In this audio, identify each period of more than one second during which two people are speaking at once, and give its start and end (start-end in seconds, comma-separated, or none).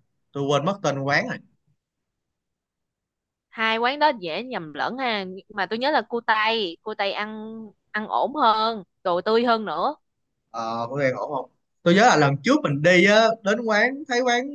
none